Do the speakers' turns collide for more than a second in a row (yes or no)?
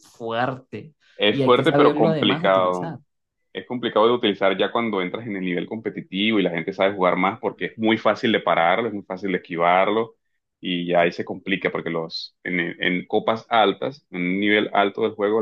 yes